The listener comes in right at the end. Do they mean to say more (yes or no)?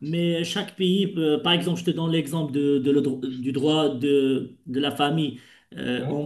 no